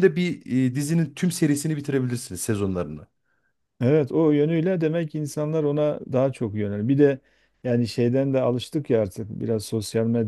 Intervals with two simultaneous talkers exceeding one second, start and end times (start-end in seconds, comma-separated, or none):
none